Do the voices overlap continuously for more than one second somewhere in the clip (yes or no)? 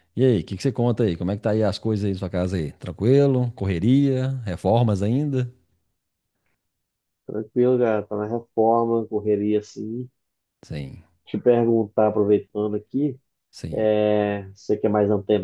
no